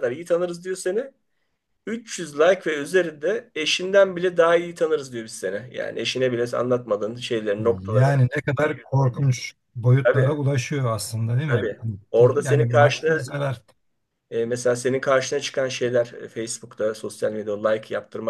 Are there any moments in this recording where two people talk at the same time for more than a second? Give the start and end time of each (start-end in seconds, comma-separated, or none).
11.5-13.2